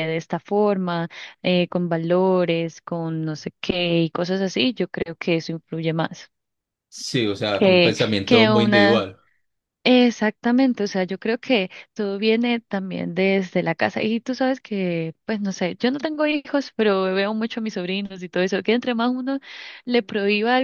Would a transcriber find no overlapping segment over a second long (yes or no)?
no